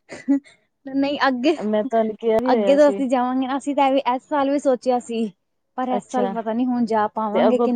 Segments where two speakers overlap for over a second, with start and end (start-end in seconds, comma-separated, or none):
1.6-3.0